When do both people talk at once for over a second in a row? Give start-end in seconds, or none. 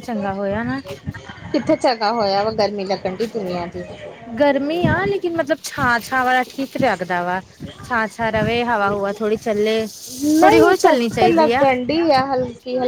10.4-11.7